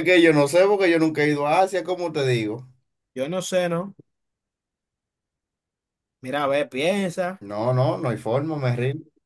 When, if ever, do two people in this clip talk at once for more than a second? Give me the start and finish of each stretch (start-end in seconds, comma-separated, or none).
none